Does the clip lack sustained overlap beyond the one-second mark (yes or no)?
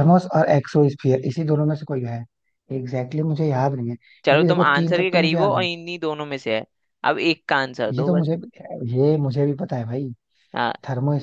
no